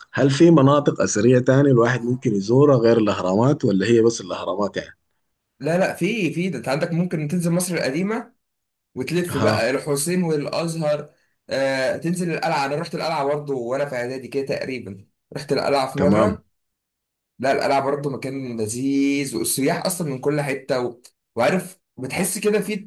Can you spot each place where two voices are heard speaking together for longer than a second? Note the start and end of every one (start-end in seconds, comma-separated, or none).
none